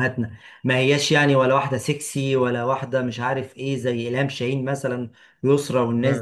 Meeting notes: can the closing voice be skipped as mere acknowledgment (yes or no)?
yes